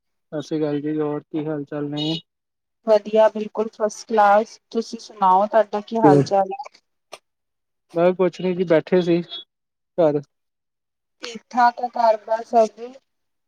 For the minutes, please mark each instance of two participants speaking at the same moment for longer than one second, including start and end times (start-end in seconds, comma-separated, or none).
none